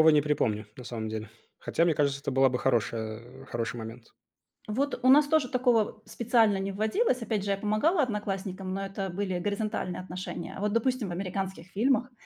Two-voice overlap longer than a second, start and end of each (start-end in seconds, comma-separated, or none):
none